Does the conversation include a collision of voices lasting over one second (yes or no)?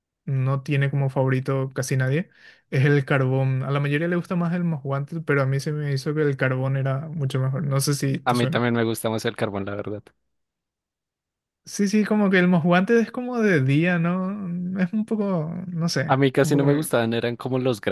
no